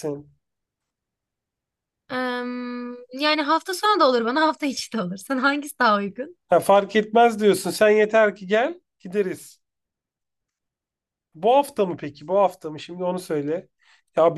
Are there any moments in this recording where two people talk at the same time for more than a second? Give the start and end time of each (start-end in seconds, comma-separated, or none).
none